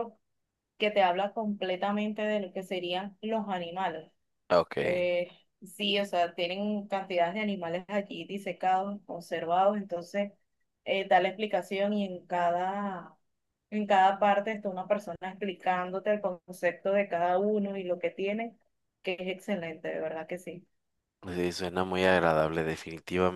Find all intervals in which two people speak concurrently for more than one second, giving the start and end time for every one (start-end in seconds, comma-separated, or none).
none